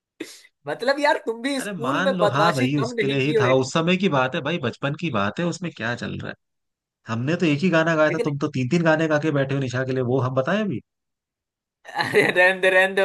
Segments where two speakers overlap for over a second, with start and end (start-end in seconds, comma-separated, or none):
1.6-3.6